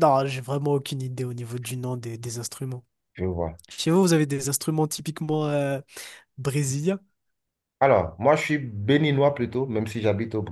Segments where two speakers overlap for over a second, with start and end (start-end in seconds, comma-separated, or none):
none